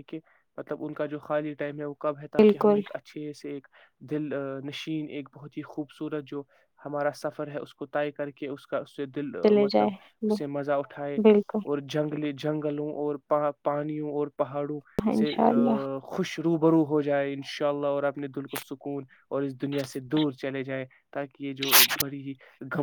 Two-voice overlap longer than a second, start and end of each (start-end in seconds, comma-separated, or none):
none